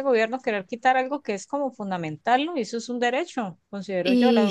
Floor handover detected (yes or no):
no